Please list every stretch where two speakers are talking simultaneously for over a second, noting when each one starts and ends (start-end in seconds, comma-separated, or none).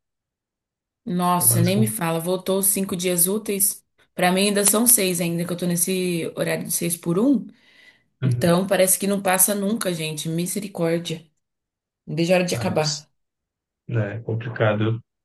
none